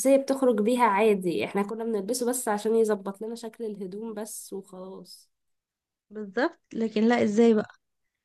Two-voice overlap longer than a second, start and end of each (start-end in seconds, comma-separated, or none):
none